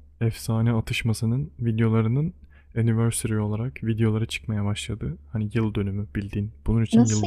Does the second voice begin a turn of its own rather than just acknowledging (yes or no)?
yes